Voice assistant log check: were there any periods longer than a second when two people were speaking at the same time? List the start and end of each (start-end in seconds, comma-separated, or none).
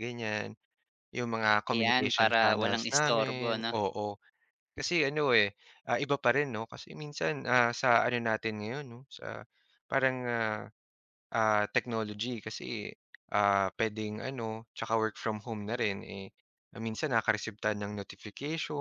1.7-3.7